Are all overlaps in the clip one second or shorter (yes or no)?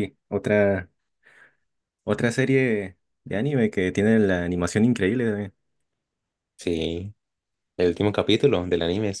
yes